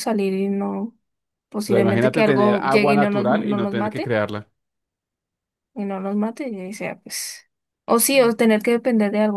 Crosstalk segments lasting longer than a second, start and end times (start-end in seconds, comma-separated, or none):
1.7-4.2